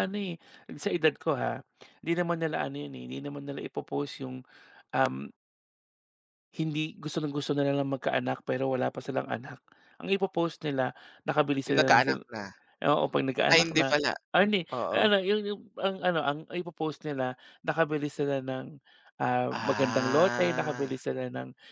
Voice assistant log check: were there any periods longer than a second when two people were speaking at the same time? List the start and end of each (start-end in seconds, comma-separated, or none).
19.5-21.0